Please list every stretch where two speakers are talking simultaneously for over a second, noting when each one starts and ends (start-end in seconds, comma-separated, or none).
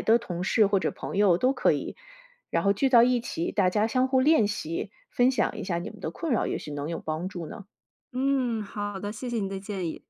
none